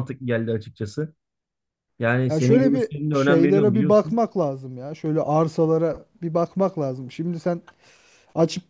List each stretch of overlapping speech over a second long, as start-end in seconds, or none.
2.3-4.2